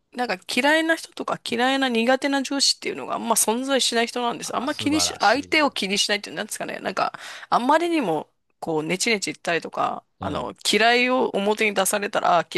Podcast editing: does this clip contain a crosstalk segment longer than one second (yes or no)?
yes